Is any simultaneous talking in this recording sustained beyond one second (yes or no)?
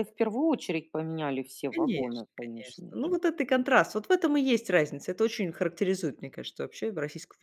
yes